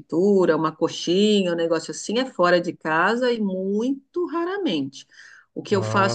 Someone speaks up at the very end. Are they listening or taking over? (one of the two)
listening